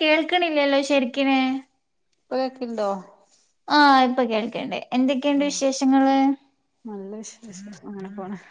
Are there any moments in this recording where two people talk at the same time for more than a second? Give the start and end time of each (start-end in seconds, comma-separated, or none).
none